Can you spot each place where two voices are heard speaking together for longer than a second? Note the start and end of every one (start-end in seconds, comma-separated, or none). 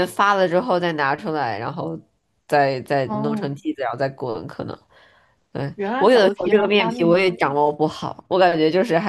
5.7-7.2